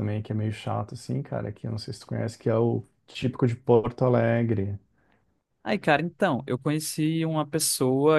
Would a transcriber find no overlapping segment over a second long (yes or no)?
yes